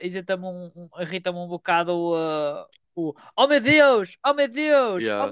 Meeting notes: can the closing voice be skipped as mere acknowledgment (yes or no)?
no